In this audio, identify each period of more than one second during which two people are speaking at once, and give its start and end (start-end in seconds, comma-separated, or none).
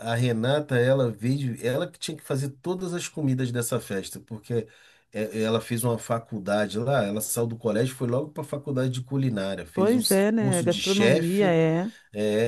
9.7-11.5